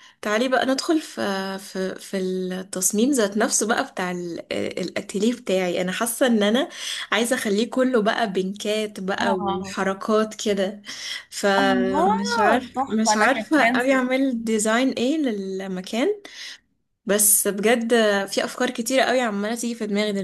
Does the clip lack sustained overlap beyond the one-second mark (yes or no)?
no